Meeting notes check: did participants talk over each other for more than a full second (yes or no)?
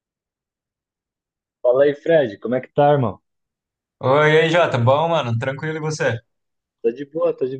no